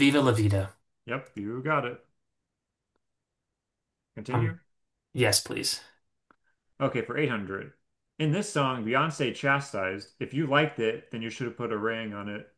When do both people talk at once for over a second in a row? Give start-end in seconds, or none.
none